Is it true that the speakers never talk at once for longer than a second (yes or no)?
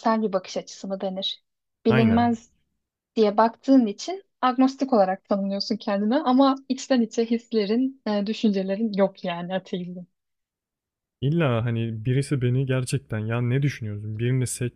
yes